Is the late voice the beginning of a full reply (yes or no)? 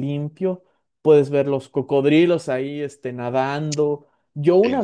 no